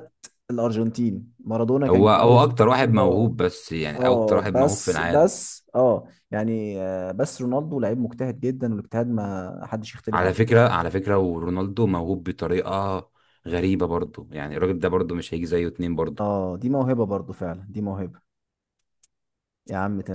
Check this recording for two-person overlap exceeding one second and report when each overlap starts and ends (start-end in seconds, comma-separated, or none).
1.9-3.3, 4.0-5.3